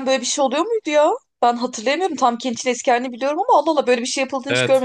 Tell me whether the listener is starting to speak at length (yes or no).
yes